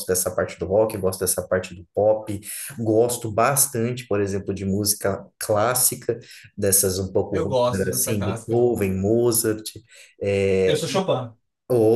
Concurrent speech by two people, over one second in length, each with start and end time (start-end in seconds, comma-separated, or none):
7.3-8.6